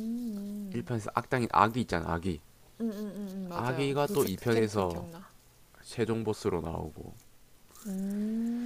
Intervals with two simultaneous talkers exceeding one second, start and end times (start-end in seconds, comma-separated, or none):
3.5-5.1